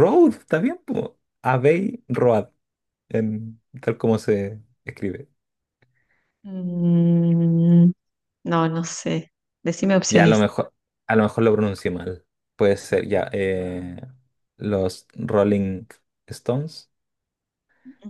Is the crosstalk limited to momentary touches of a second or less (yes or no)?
yes